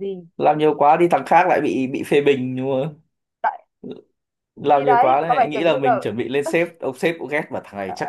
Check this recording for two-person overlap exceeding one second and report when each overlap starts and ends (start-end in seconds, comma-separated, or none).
4.7-6.0